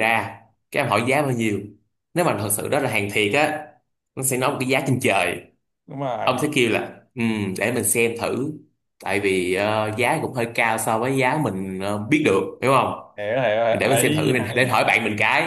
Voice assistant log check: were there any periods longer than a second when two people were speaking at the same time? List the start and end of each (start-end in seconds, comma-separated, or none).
13.7-14.9